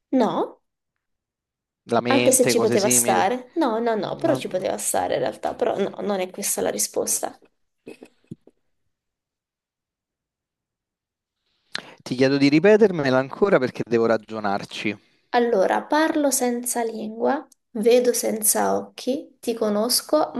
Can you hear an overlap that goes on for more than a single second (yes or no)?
yes